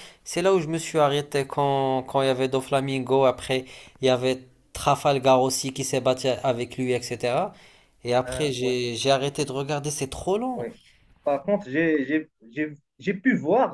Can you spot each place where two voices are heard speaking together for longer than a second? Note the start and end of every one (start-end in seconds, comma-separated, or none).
none